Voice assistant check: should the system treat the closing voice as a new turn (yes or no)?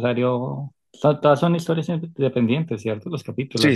yes